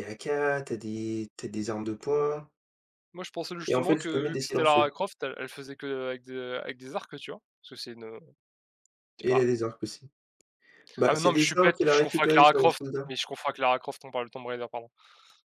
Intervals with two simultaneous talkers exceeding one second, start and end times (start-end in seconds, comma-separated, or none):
3.7-4.9, 11.0-13.1